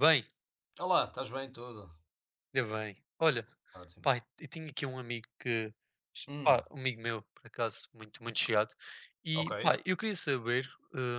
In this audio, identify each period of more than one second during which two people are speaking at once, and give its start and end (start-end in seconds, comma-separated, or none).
none